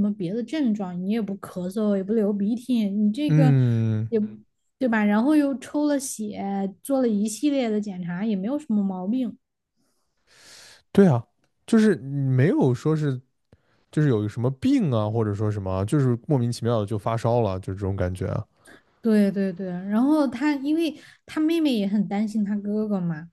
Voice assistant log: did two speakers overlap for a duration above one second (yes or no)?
no